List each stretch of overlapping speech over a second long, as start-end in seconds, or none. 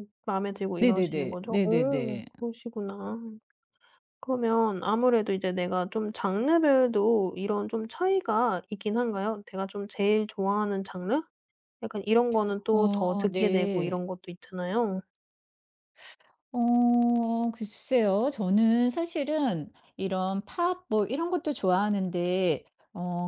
0.8-2.2, 12.7-14.0